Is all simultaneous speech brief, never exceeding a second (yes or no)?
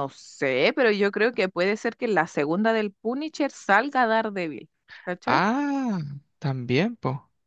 yes